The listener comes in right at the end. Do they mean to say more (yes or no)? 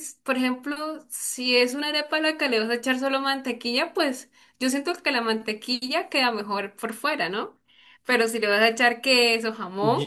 yes